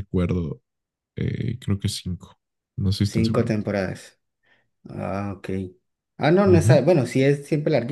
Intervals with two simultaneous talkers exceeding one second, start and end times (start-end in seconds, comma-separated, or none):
none